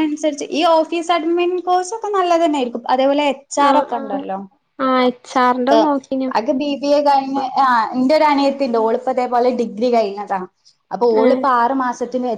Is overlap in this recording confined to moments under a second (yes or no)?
yes